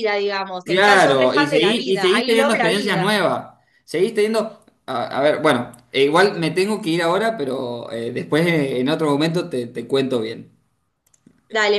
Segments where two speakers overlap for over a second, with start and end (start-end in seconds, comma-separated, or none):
0.6-3.2